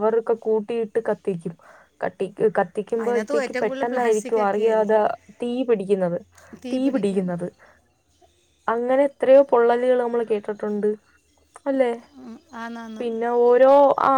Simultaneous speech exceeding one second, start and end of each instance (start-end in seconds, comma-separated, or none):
3.0-5.0